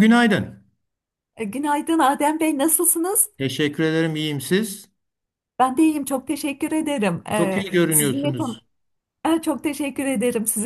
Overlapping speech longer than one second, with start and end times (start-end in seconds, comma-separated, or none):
7.3-8.6